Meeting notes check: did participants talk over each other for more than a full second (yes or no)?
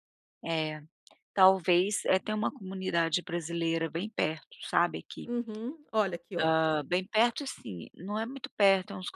no